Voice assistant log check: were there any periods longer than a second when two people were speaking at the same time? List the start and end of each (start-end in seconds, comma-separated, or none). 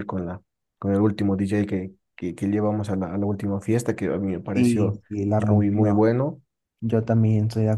4.5-6.1